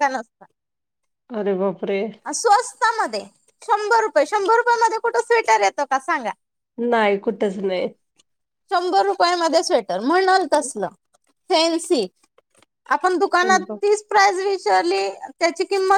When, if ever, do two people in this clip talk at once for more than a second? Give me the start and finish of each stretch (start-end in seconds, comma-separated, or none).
none